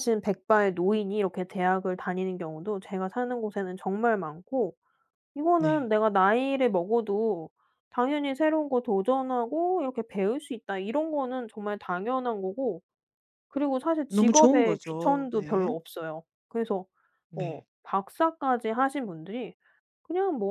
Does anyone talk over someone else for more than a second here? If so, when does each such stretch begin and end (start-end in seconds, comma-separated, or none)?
14.1-15.7